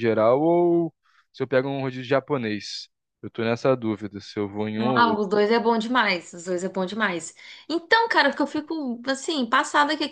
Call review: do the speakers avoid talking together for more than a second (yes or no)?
yes